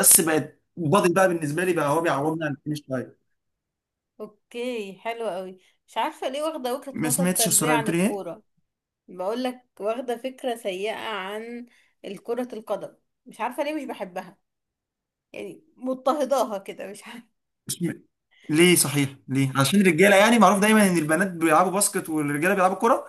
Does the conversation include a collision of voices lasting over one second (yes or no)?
yes